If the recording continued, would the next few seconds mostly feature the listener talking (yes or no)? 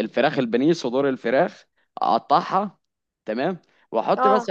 no